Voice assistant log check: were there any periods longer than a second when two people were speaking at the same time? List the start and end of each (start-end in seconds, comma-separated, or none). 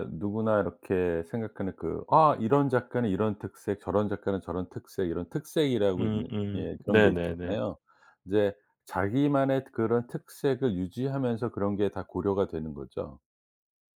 6.0-7.6